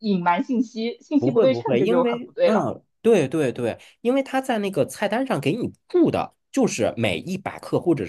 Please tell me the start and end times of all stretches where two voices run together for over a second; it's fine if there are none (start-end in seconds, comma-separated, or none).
1.2-2.7